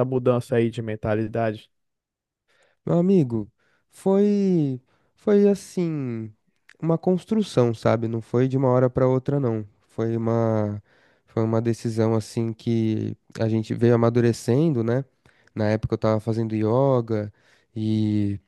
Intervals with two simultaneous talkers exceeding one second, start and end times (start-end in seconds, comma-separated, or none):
none